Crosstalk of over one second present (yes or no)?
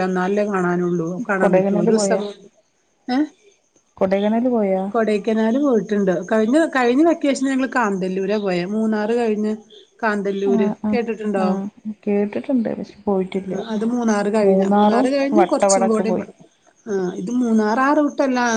yes